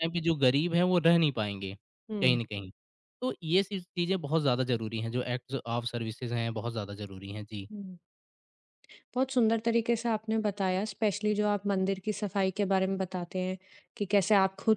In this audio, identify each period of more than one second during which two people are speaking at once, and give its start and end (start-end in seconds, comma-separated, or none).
none